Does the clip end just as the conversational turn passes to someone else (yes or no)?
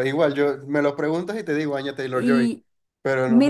yes